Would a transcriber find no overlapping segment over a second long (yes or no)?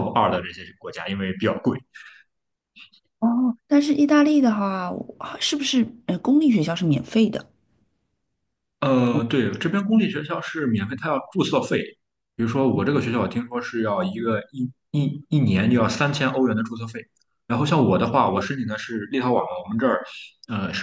yes